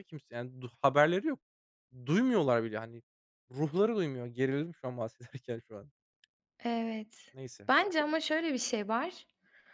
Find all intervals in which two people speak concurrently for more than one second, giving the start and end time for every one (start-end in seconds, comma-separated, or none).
none